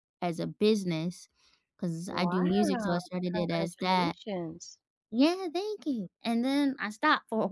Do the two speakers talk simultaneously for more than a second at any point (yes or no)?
yes